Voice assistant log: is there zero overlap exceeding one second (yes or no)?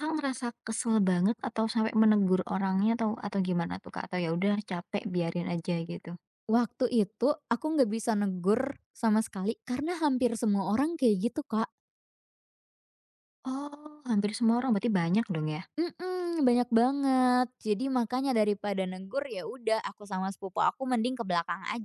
yes